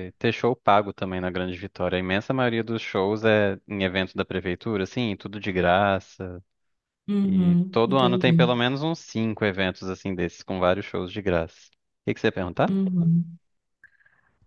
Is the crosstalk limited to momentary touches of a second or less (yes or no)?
no